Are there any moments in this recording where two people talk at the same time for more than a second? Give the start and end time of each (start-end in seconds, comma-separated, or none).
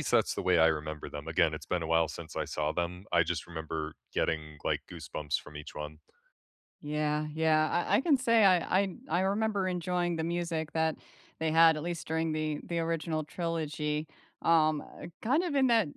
none